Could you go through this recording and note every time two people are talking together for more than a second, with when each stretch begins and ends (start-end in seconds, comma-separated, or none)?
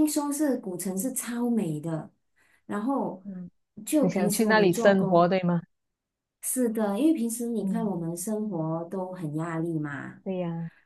4.0-5.4